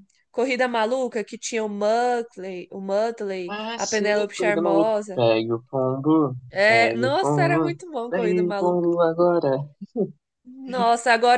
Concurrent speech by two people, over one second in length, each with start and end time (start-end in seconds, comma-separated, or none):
3.5-5.2, 6.5-8.9